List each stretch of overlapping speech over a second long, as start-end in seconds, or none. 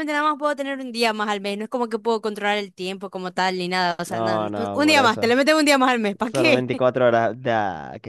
4.0-5.3